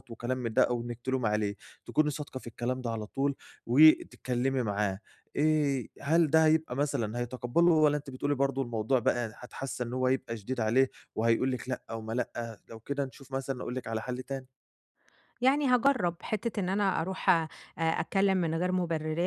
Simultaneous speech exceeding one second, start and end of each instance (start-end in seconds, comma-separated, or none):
none